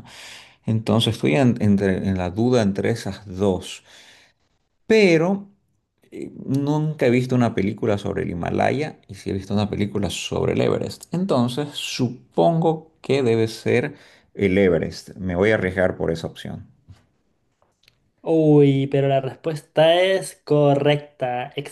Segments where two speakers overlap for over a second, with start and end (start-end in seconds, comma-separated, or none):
none